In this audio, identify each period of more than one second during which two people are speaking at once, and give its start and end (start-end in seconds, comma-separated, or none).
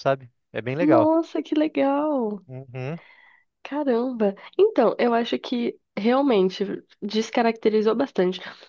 none